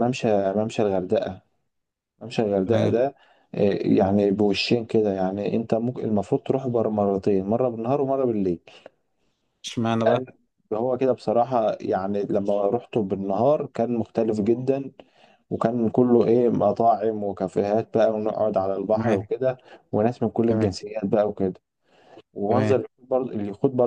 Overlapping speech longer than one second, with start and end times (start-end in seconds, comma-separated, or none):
none